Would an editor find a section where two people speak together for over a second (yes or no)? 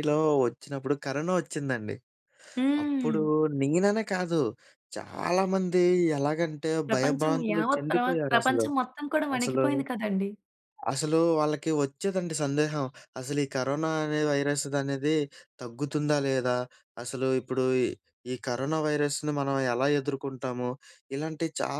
yes